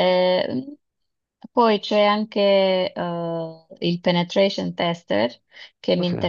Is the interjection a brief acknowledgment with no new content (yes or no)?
yes